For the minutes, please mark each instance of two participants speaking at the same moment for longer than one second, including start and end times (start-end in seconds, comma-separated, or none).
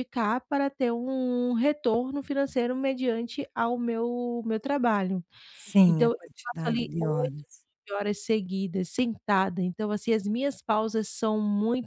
5.9-7.4